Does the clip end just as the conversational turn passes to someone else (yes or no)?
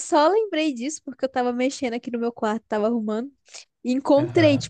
no